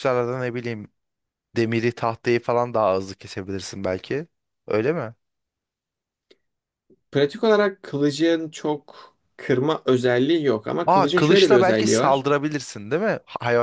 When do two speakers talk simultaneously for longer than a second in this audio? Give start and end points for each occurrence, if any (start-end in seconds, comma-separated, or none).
10.9-12.3